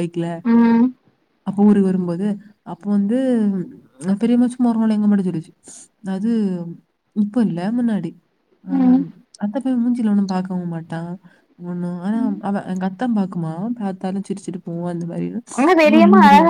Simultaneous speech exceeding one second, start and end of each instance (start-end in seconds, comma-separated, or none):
none